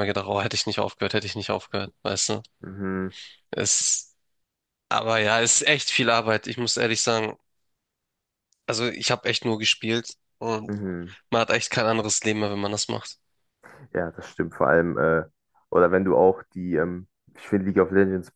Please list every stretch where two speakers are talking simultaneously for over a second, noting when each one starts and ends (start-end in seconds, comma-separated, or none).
none